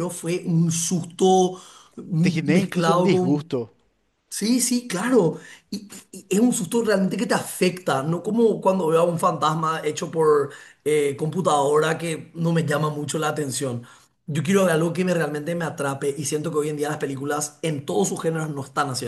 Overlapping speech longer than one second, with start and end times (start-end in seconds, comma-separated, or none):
2.2-3.5